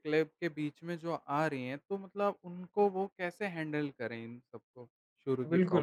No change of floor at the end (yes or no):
no